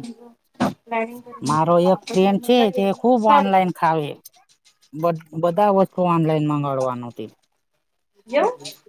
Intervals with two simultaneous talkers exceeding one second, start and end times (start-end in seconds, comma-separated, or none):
1.5-3.7